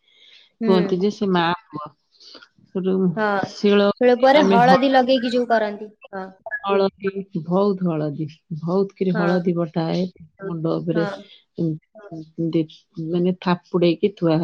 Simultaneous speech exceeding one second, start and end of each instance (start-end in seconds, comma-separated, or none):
none